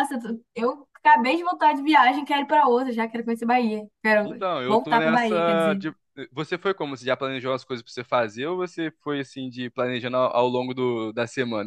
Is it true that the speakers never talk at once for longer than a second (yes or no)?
no